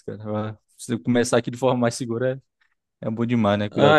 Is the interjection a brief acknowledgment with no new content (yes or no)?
no